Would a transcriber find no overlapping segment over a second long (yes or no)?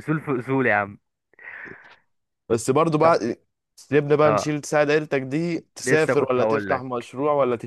no